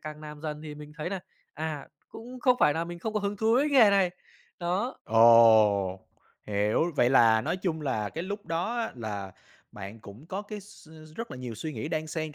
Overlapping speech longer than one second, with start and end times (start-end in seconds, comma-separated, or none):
none